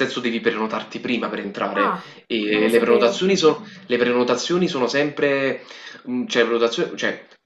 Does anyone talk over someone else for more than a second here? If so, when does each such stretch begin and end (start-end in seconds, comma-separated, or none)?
1.7-3.3